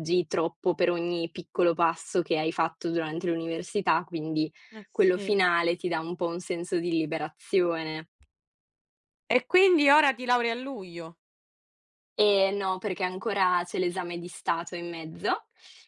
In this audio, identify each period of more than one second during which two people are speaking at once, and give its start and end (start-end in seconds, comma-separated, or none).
none